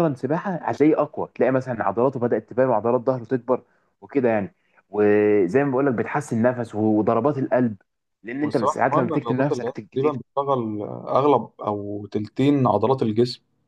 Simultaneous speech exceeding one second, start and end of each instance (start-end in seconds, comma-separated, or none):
8.4-10.2